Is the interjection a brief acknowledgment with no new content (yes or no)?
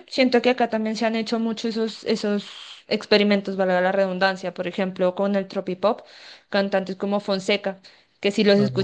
yes